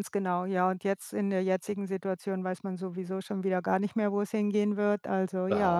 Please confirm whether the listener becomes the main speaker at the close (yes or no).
yes